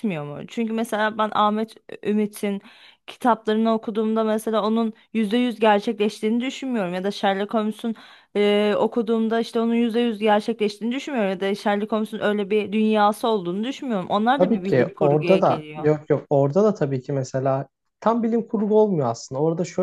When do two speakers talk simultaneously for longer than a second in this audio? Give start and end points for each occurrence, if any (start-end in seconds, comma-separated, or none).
14.4-15.9